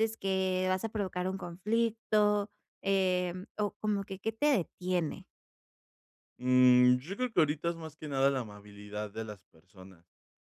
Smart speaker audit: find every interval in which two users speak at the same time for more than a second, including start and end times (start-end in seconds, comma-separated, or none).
none